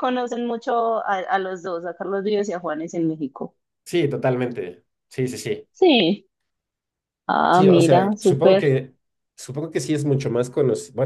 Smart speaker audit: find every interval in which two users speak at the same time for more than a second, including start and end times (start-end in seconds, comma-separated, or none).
7.5-8.7